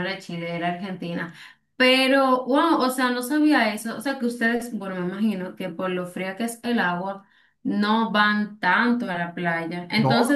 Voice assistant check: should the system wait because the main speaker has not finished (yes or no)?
yes